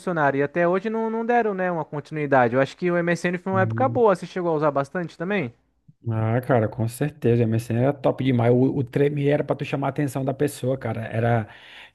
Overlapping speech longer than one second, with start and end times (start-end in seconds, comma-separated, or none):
none